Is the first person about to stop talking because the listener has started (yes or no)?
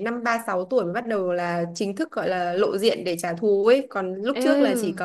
no